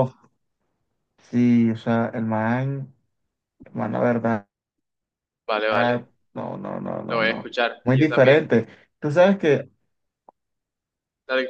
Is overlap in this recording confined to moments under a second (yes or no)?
no